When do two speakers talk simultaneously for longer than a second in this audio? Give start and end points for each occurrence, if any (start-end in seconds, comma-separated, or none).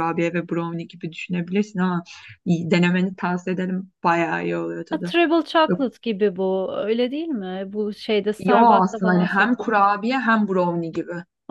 8.4-9.7